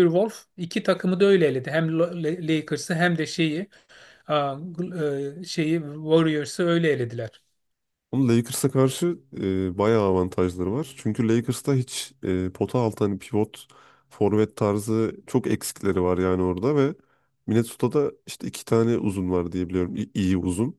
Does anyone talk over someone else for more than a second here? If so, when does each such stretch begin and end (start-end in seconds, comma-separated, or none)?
none